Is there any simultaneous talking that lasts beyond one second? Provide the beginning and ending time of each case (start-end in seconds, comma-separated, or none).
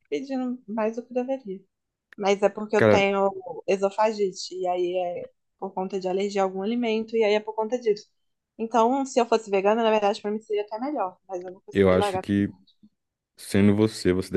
none